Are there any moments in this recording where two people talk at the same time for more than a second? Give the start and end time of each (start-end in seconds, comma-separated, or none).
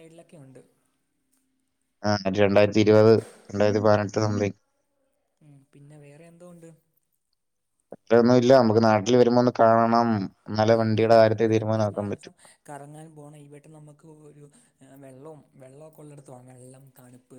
10.7-12.3